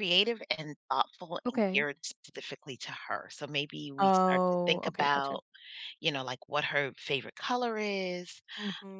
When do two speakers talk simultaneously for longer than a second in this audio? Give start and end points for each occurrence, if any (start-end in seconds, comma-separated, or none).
4.0-5.4